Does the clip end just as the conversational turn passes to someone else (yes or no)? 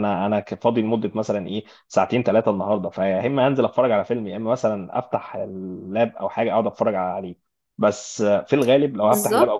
no